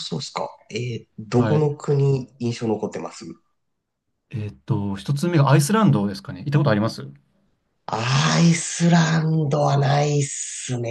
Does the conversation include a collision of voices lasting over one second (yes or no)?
no